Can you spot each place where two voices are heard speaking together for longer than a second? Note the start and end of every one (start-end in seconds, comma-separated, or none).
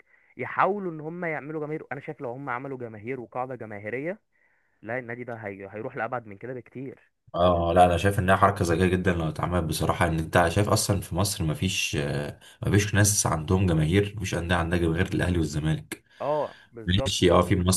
none